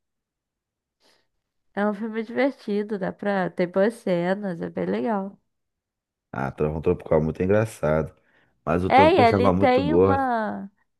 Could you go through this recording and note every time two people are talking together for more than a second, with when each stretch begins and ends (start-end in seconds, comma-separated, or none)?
8.9-10.3